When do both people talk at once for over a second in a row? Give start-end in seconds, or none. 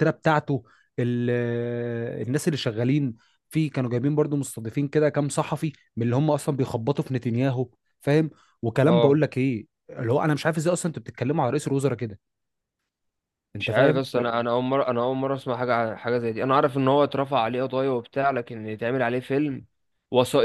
none